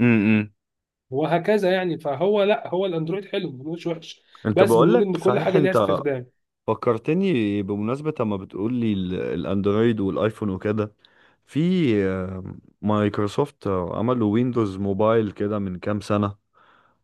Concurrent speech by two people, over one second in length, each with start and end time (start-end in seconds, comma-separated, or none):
4.5-5.9